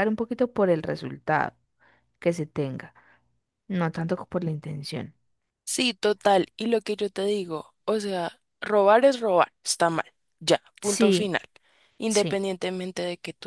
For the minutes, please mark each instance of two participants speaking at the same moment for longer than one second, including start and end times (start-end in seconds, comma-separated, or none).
none